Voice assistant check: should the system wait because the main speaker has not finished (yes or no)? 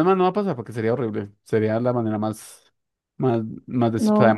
yes